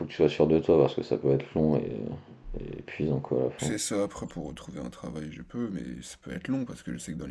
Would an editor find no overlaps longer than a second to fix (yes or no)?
yes